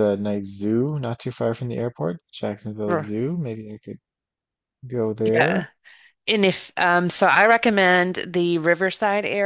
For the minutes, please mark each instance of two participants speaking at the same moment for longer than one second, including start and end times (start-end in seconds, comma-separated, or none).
none